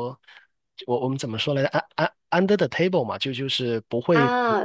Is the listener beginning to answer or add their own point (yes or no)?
yes